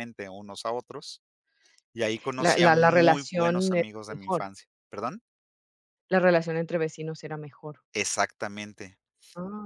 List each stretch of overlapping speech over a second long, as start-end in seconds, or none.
2.4-4.5